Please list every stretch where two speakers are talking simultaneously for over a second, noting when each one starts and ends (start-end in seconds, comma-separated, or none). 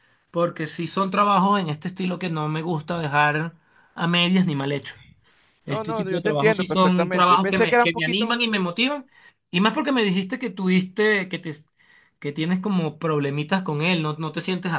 5.7-8.4